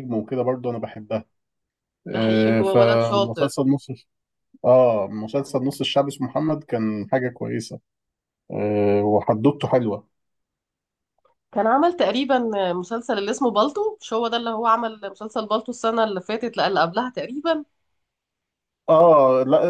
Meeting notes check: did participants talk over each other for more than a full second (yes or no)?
yes